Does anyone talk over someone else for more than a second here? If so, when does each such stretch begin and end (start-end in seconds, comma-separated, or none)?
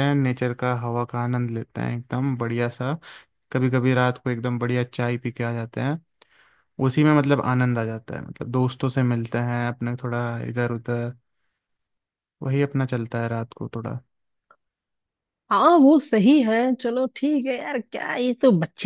none